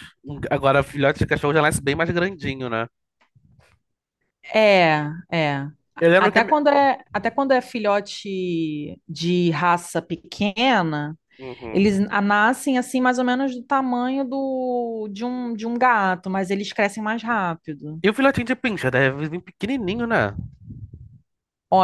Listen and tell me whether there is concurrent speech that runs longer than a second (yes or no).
no